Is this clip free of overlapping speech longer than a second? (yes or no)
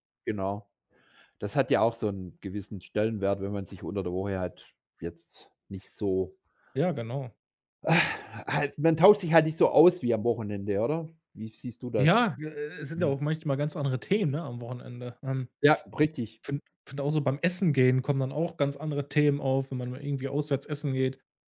yes